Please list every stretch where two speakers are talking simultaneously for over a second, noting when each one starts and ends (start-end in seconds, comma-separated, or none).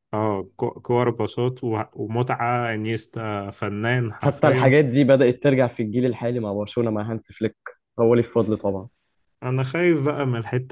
none